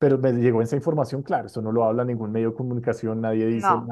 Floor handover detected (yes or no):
no